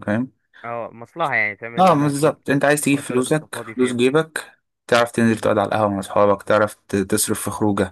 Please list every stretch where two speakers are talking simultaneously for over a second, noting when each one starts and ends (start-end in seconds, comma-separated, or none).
1.8-4.0